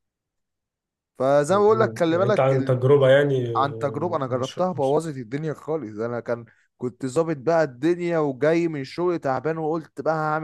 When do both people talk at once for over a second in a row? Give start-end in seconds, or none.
1.5-2.8, 3.5-5.0